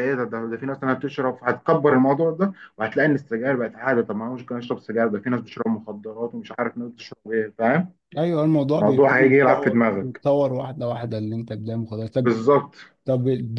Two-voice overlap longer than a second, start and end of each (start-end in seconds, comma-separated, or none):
8.8-10.2